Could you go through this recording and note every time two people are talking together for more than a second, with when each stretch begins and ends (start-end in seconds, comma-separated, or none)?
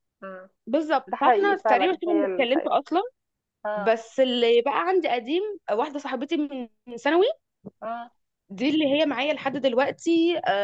1.1-2.8